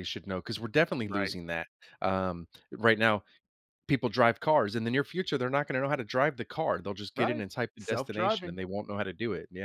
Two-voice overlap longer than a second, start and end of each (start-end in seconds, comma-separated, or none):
7.1-8.6